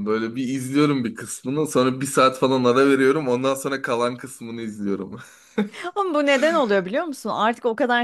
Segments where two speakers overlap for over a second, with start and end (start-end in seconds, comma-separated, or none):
none